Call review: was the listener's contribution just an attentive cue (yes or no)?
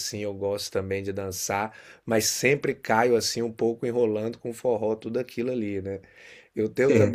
yes